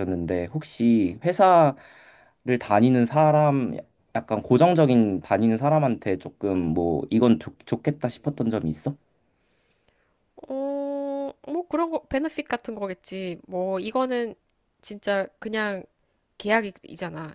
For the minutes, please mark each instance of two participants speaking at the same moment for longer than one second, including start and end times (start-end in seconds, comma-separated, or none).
none